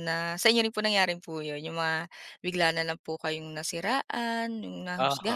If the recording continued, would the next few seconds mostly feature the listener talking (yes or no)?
yes